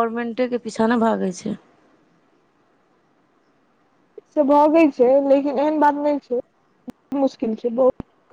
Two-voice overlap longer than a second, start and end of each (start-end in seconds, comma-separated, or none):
none